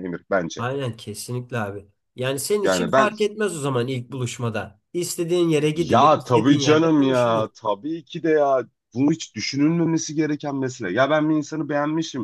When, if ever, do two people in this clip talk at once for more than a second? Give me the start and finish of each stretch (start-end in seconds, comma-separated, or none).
5.8-7.5